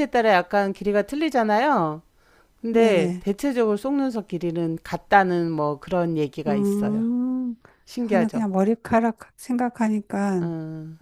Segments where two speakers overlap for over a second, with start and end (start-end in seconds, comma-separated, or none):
none